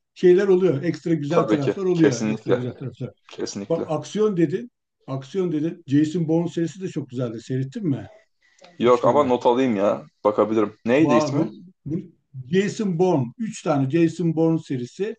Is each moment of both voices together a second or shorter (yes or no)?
no